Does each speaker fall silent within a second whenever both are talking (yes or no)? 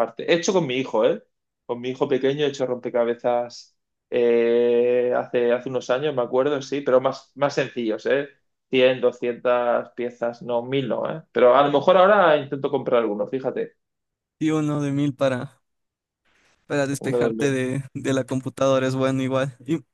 yes